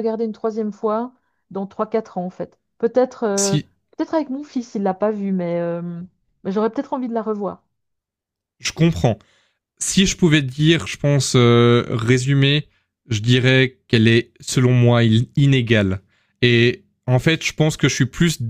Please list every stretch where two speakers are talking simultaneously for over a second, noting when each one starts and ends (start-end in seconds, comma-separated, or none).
none